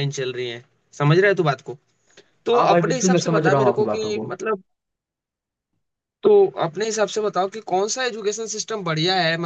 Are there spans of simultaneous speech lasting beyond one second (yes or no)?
yes